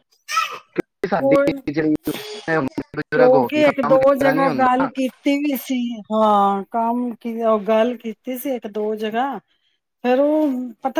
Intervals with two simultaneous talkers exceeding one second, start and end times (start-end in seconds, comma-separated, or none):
3.1-4.9